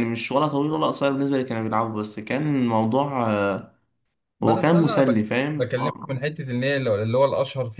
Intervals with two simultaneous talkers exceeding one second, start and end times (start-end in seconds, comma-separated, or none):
4.4-6.1